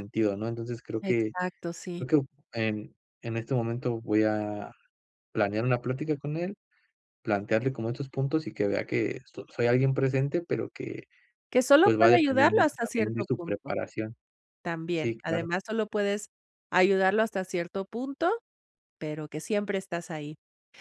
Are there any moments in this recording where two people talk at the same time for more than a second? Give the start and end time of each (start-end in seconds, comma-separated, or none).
11.8-13.7